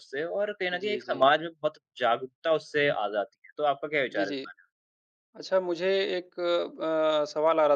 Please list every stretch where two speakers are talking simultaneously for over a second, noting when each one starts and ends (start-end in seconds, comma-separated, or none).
none